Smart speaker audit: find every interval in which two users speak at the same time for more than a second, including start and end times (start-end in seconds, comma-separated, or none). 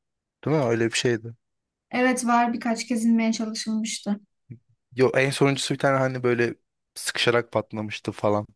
none